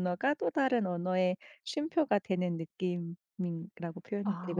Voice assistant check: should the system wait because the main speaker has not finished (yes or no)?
no